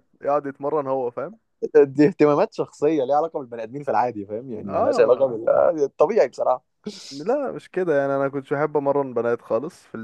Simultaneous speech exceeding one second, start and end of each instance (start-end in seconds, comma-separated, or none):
none